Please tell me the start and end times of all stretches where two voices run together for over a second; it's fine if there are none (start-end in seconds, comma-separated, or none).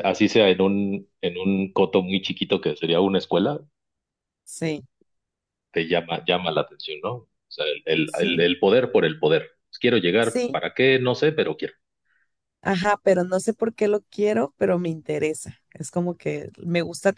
none